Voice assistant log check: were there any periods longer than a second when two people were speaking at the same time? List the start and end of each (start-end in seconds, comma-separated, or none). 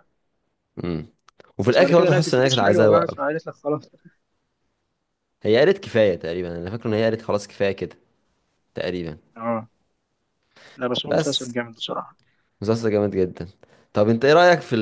1.7-3.2